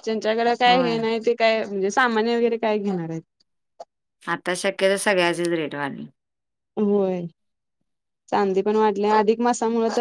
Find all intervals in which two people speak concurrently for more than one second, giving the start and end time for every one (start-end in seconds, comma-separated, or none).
none